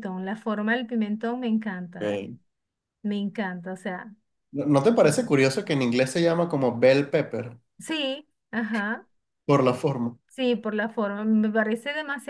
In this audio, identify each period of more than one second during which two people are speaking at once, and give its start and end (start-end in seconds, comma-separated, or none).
none